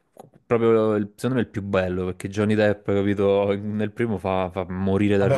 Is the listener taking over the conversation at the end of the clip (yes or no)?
yes